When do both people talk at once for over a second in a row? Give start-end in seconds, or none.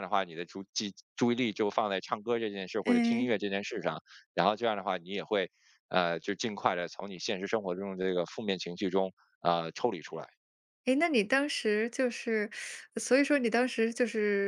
none